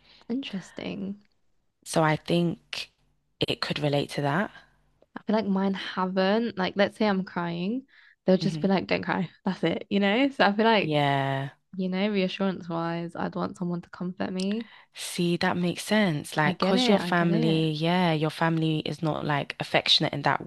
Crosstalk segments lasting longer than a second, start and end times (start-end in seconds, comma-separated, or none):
16.4-17.7